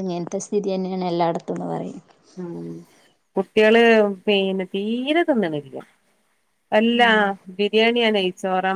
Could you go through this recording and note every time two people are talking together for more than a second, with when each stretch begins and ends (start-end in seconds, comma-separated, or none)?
none